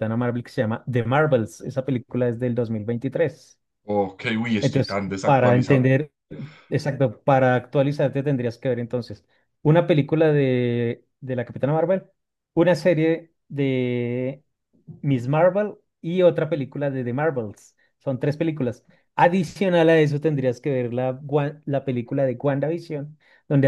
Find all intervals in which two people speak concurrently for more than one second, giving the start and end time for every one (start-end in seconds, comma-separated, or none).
4.6-5.9